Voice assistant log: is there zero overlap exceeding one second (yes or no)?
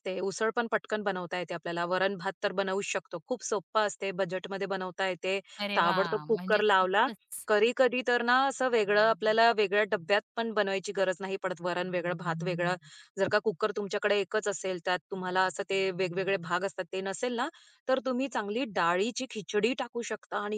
no